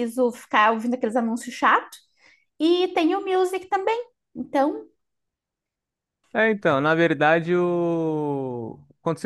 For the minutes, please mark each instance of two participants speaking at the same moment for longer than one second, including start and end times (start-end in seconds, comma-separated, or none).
none